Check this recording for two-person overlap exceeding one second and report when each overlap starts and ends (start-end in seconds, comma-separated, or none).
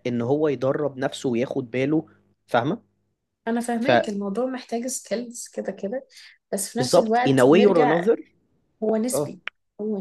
6.8-8.0